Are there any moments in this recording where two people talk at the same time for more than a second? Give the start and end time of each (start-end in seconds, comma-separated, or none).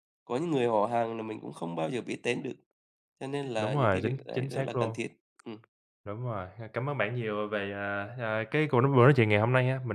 3.6-5.0